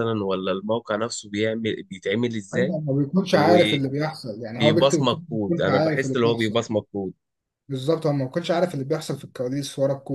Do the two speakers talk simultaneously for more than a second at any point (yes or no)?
yes